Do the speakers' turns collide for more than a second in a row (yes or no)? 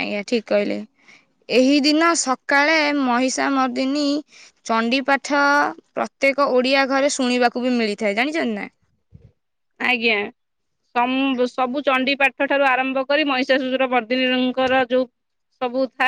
no